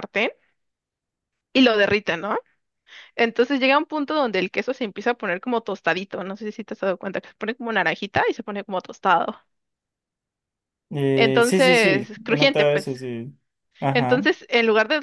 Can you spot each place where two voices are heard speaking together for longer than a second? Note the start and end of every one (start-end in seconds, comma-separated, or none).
11.1-12.9